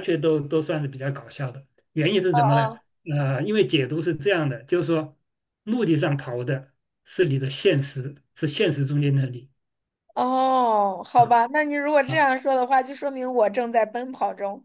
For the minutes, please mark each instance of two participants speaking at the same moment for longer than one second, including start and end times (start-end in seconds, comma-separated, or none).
none